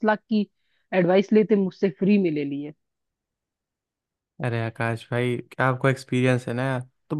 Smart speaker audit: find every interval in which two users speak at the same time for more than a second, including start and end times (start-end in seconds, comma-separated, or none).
none